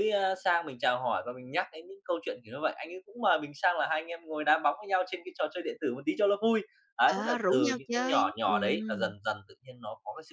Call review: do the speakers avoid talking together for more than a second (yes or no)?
no